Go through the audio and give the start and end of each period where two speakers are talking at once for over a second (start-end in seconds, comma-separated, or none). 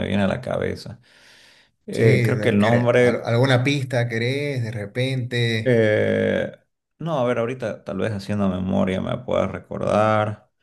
1.9-3.3